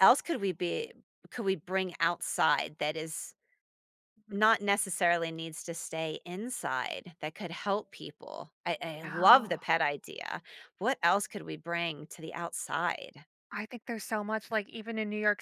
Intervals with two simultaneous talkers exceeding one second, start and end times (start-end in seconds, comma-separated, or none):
none